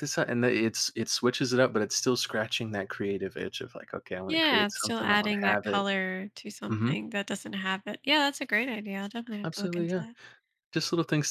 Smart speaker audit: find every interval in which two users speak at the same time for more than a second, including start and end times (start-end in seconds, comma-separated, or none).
4.2-5.9